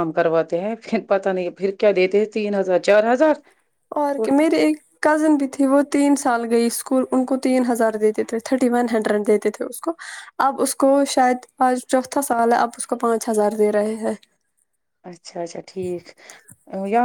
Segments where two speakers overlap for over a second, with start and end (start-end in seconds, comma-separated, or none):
none